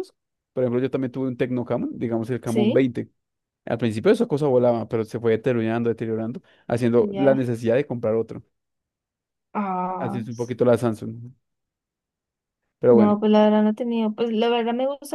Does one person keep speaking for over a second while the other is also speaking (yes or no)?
no